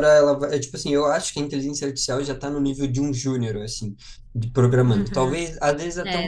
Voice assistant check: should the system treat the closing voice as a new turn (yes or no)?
no